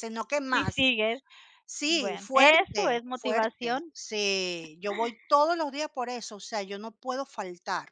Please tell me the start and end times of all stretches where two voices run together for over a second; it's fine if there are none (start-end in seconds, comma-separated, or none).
1.9-3.9